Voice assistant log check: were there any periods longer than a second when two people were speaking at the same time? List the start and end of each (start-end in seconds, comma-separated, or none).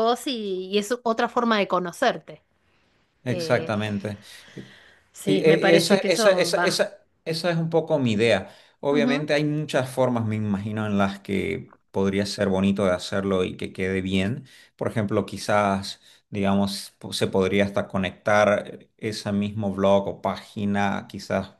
5.2-6.8